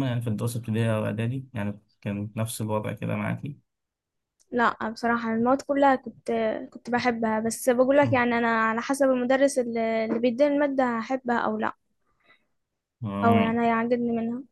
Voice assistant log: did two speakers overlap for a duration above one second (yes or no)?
no